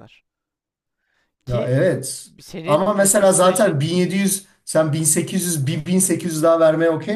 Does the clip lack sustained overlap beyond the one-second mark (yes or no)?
no